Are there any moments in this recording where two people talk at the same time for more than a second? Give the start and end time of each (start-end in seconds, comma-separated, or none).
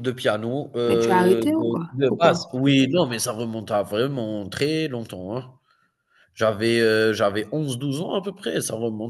0.8-2.5